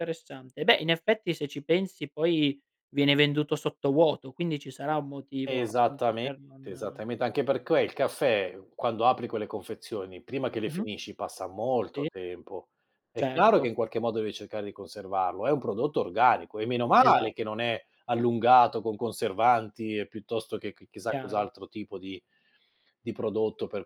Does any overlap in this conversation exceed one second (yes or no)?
yes